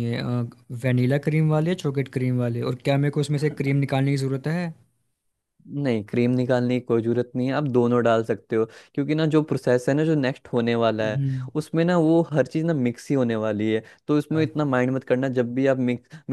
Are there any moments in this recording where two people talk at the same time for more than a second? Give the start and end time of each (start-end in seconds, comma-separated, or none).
none